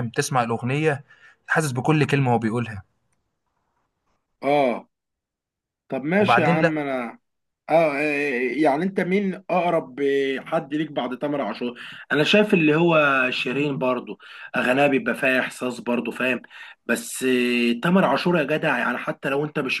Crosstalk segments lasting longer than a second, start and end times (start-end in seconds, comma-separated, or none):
none